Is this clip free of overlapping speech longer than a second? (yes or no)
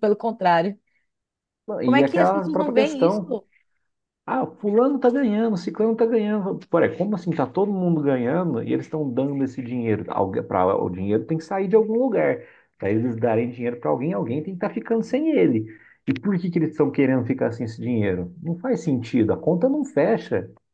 no